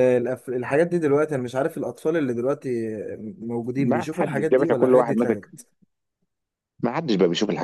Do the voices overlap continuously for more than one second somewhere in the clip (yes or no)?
yes